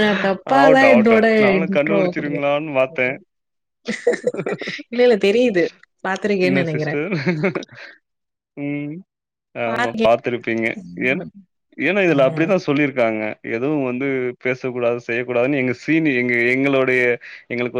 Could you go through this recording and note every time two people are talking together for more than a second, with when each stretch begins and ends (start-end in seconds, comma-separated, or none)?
0.6-2.4